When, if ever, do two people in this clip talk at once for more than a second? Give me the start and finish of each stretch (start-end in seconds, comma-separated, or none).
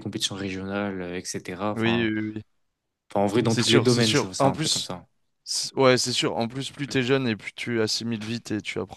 3.5-4.9